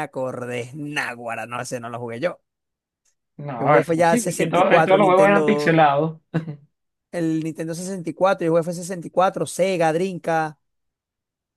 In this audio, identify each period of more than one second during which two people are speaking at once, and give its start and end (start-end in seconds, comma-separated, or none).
3.6-5.8